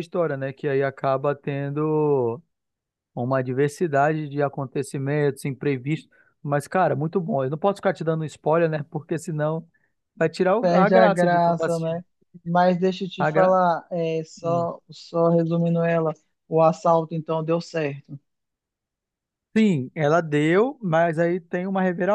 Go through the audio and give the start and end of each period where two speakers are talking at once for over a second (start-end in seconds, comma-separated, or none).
10.6-12.0